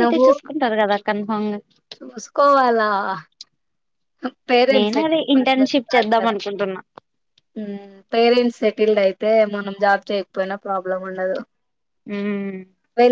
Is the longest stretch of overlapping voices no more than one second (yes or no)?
no